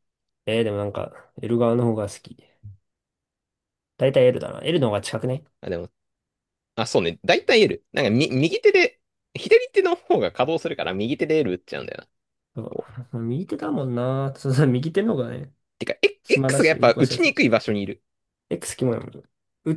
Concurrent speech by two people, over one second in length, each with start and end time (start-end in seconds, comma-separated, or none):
16.2-17.5